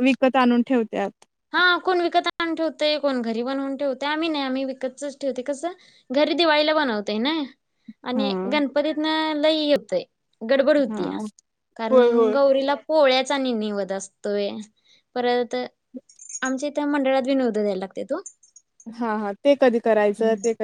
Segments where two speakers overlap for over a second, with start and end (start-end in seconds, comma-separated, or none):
none